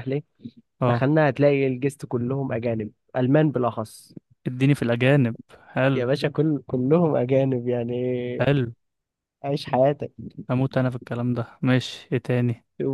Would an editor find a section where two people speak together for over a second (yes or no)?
no